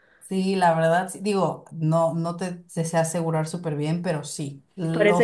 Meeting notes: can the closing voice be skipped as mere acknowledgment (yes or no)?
no